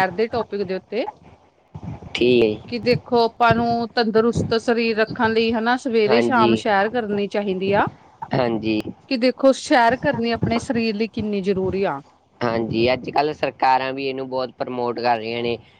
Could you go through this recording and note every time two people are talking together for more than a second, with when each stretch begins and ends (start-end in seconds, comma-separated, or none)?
none